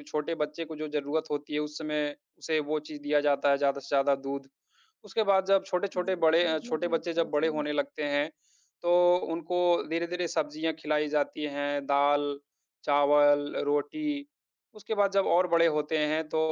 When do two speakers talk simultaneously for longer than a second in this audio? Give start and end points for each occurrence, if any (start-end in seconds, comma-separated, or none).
6.0-7.6